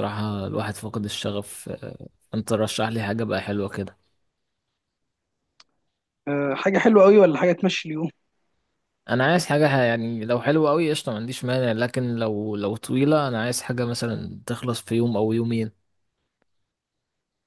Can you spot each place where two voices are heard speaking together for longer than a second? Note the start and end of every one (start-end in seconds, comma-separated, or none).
none